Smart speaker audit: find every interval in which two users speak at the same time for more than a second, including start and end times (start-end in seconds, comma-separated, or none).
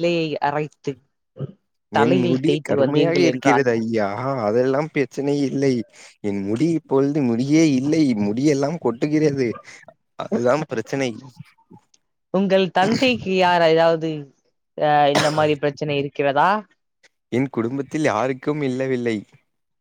2.0-3.6